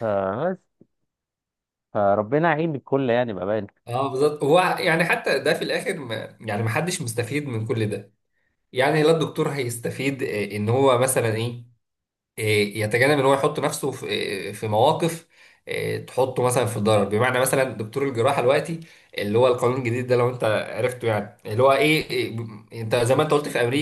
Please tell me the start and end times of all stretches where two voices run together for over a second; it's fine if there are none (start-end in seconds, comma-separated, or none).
none